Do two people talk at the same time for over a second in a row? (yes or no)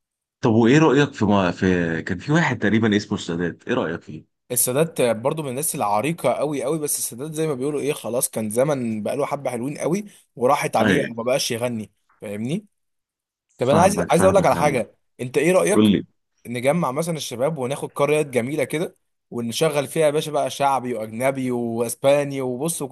yes